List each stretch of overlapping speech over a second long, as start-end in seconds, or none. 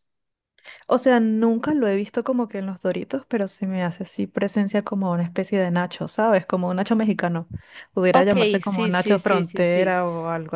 8.1-9.9